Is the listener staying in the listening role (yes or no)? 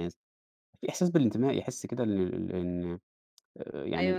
no